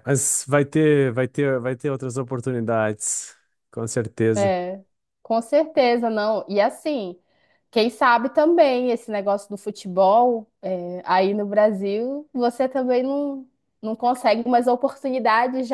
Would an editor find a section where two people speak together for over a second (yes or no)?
no